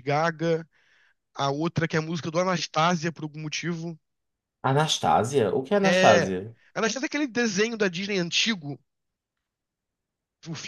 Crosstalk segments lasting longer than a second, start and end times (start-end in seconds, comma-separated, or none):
none